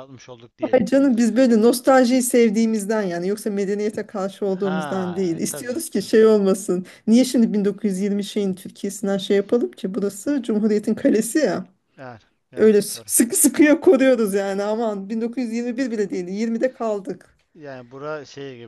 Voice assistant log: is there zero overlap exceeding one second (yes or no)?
no